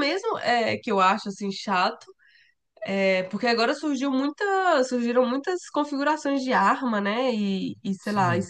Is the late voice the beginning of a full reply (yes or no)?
no